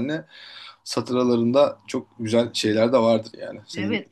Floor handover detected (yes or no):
yes